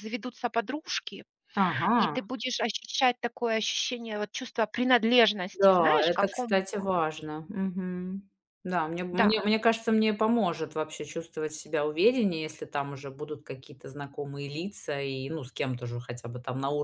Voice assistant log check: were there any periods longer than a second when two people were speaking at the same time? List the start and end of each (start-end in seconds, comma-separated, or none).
5.5-6.9